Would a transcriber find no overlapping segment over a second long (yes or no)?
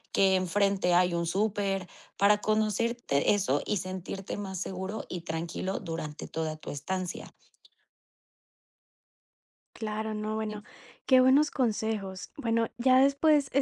yes